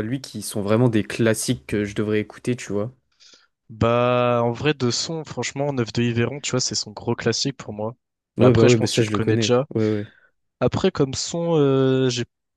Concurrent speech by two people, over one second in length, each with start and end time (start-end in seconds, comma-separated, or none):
8.4-9.7